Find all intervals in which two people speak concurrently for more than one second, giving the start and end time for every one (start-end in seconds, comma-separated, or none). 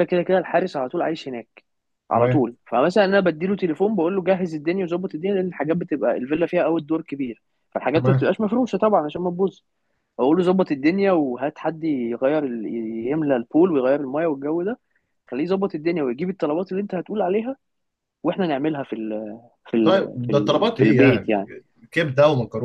19.8-21.4